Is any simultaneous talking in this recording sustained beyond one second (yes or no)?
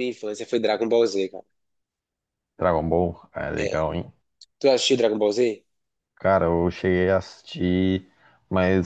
no